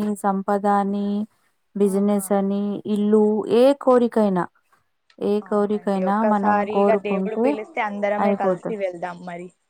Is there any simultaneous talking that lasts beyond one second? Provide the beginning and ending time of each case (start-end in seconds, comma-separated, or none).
5.5-7.5